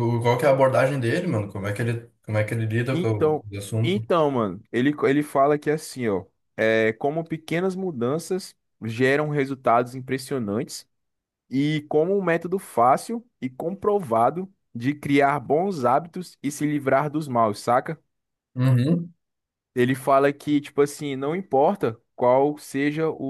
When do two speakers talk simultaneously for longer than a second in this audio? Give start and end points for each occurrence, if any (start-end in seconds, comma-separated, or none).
none